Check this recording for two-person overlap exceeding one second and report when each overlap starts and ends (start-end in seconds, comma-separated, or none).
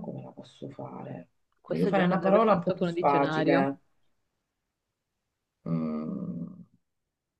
1.6-3.8